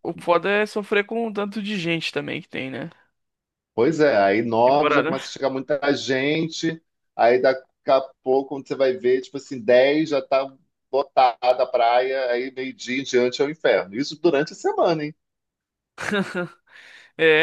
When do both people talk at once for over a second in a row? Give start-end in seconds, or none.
none